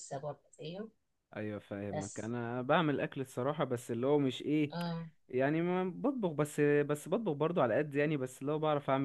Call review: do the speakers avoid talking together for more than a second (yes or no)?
yes